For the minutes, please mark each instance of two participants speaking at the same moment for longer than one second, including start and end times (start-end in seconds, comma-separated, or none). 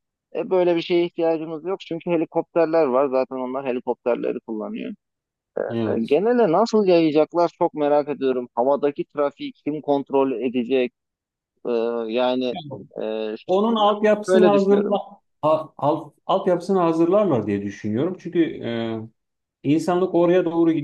13.5-15.0